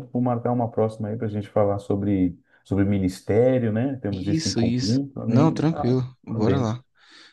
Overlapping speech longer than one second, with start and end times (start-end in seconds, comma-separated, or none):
4.1-6.8